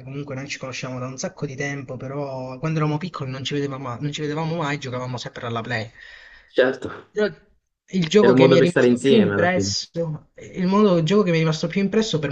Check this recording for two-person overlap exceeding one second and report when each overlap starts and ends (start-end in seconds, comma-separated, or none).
8.2-9.7